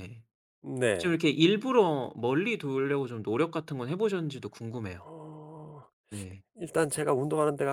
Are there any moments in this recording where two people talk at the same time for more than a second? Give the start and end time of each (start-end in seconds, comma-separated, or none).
none